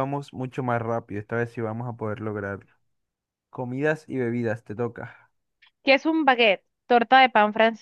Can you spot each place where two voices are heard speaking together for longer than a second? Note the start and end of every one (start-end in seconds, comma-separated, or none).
none